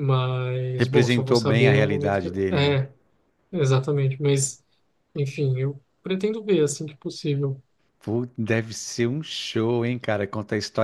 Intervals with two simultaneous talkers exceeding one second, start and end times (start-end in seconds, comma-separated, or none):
0.8-2.8